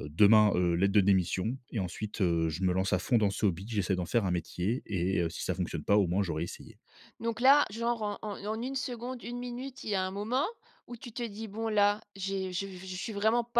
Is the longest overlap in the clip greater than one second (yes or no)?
no